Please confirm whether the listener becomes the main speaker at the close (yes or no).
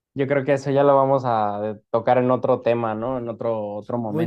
yes